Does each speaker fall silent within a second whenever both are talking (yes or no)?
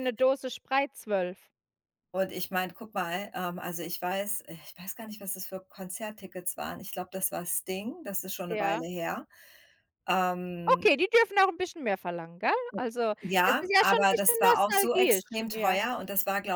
no